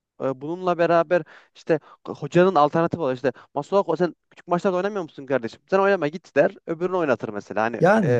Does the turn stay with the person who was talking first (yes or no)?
yes